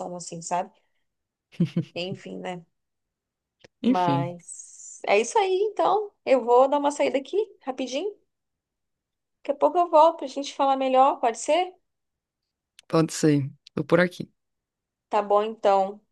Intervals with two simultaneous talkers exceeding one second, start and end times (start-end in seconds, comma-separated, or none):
none